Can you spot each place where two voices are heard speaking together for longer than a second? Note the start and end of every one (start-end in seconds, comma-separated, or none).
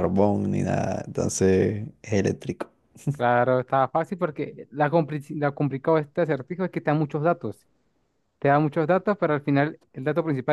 none